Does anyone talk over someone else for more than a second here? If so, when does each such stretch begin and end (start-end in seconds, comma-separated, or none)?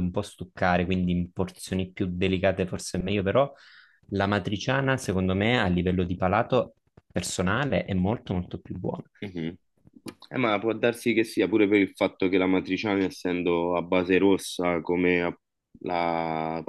none